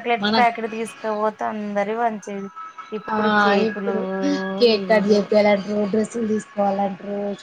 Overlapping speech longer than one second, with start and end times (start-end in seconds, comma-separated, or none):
none